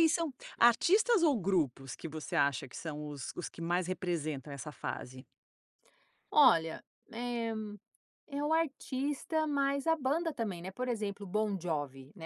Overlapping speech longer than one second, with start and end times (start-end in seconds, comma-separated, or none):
none